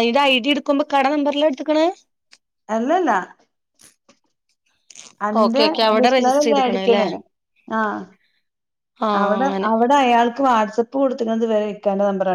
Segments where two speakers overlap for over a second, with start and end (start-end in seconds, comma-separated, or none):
5.4-7.0